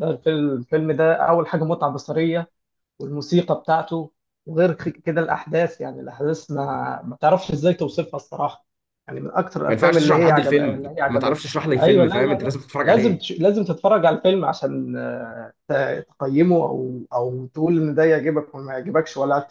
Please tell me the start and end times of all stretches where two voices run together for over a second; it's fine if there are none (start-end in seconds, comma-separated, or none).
9.7-13.2